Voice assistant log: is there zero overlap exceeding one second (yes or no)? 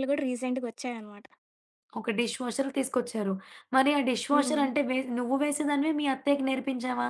yes